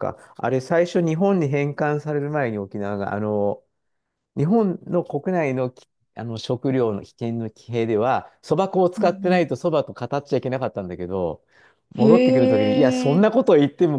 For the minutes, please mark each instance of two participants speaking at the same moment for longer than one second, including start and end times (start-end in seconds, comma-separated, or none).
12.0-13.2